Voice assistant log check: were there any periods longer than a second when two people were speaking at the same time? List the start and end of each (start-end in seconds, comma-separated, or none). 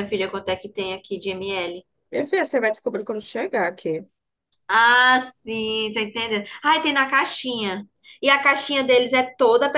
none